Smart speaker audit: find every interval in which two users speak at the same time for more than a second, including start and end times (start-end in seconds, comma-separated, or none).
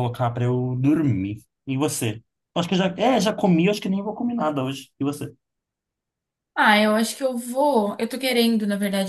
none